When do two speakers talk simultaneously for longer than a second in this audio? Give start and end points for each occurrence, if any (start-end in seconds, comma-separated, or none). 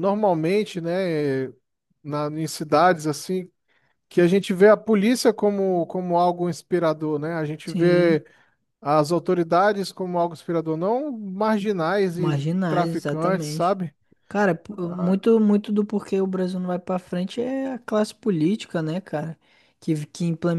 12.1-13.8